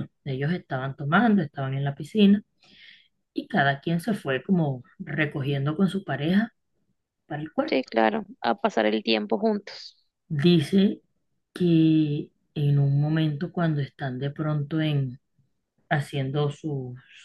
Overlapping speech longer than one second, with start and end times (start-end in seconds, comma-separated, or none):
none